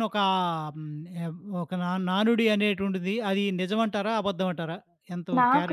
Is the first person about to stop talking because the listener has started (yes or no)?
yes